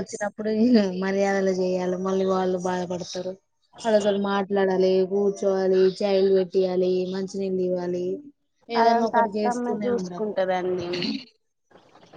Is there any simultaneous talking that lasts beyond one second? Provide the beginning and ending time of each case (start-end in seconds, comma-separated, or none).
8.8-10.3